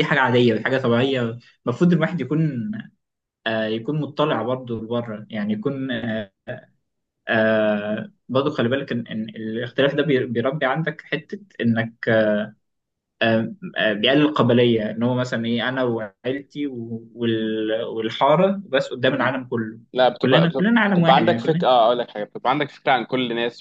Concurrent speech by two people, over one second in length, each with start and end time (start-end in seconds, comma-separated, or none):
20.2-21.6